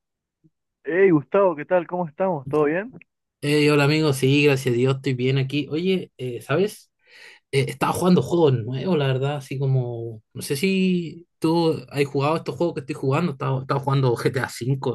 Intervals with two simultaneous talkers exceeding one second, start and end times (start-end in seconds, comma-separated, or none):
none